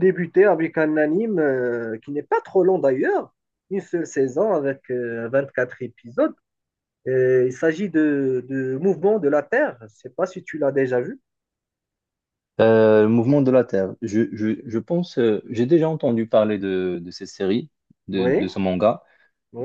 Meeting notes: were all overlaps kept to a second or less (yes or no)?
yes